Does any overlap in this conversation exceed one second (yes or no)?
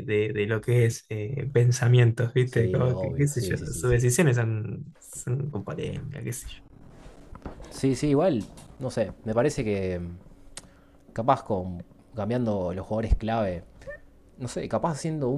yes